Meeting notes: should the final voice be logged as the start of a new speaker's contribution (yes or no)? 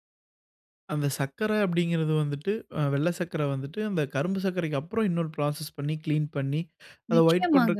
no